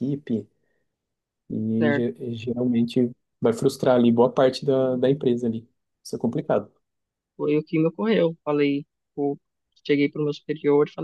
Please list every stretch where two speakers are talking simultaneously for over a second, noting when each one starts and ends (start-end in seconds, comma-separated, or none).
none